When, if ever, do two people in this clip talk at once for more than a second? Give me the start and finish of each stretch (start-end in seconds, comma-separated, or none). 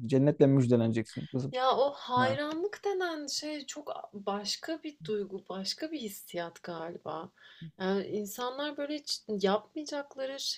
none